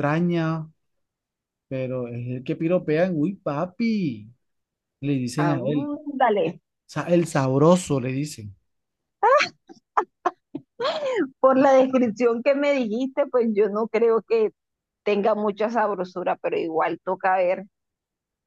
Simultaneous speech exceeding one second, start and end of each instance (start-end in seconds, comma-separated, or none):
none